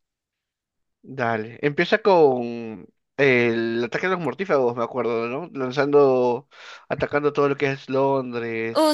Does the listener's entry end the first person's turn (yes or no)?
yes